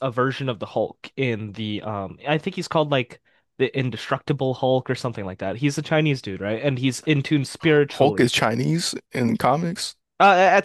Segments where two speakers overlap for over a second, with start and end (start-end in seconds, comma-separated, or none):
none